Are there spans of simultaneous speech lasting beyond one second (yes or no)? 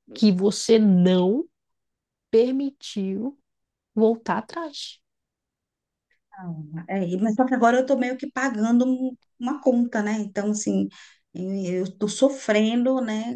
no